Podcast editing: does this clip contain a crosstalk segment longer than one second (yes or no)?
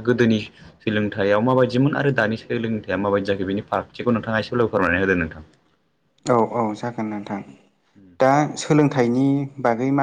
no